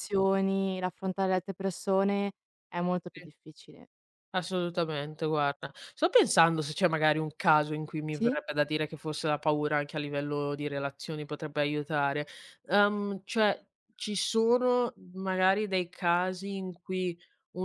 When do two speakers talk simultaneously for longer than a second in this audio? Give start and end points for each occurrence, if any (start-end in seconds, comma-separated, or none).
none